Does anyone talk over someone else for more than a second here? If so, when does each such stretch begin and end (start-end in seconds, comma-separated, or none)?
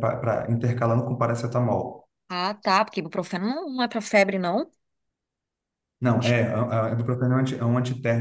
none